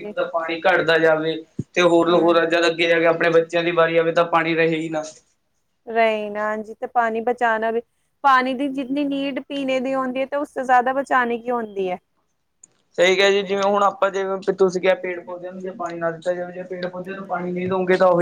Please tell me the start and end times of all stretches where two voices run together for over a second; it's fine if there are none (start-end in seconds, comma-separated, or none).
none